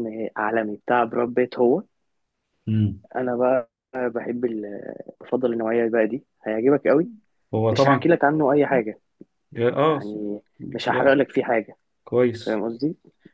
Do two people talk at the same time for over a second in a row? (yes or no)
no